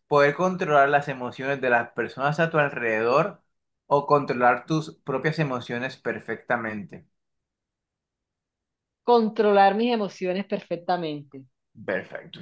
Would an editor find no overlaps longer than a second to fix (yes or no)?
yes